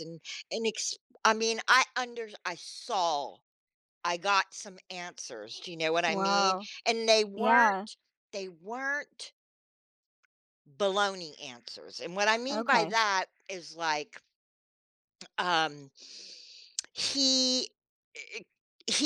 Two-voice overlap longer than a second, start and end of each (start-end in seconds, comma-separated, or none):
none